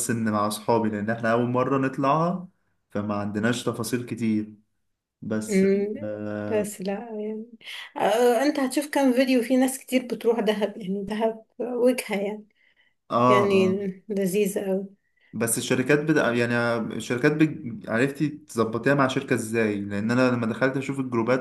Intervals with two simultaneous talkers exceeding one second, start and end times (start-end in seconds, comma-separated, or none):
none